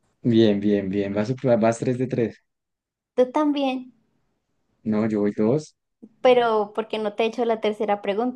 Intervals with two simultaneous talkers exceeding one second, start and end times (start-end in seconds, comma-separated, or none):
none